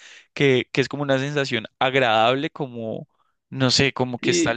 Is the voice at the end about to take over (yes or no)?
no